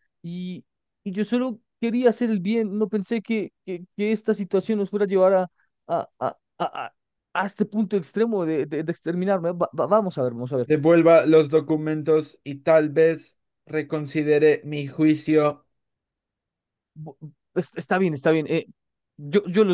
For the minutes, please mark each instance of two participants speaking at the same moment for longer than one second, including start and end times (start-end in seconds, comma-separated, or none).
none